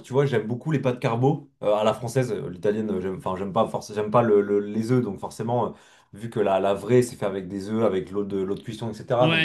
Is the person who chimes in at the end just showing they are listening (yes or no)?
no